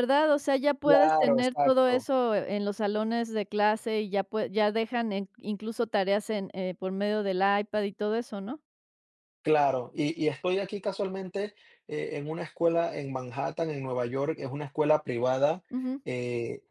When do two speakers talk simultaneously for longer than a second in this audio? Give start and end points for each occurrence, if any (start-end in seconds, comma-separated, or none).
0.8-2.1